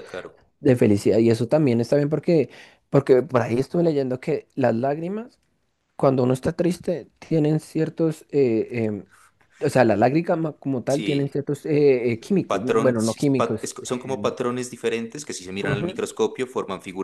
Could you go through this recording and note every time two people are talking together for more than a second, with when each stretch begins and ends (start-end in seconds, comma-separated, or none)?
12.5-14.3